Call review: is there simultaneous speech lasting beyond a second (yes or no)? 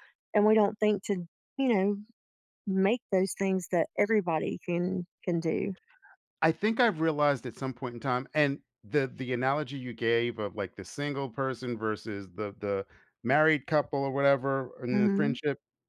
no